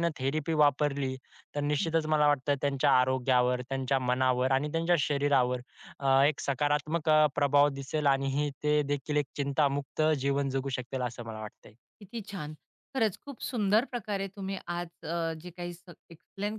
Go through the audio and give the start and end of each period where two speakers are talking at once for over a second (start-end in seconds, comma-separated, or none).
none